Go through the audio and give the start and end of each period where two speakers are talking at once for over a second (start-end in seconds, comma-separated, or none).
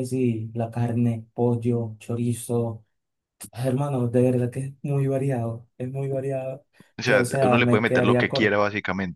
7.0-8.6